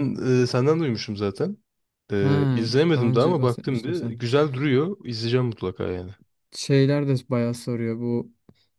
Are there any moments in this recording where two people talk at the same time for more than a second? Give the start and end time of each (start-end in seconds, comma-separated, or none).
2.9-4.2